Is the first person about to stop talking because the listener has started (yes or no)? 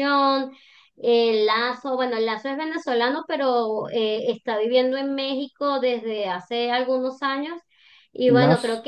no